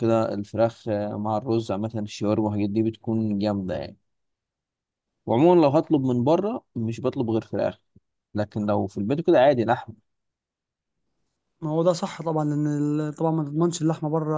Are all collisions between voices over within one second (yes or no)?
yes